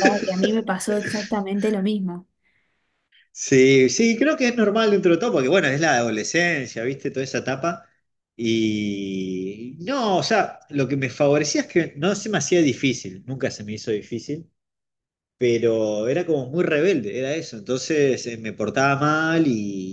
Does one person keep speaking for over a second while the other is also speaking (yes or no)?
no